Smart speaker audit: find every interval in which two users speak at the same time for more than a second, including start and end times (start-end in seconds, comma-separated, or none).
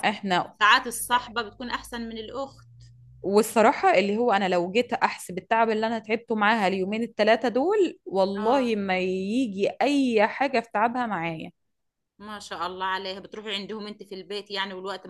none